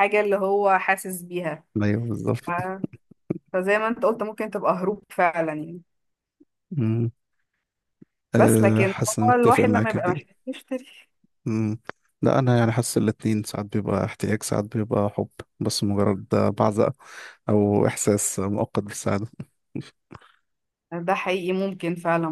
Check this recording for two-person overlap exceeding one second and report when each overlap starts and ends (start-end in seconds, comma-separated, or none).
8.4-10.2